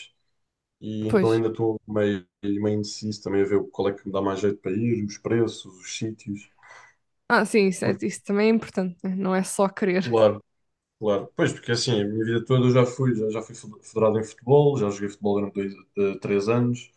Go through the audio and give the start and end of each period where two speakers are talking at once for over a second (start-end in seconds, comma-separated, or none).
none